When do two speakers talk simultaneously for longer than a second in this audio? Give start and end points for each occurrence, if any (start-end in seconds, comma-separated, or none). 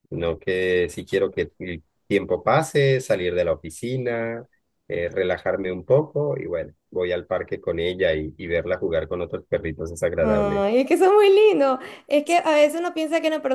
none